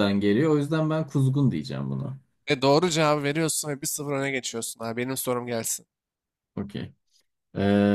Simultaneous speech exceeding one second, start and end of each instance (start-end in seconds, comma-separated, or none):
none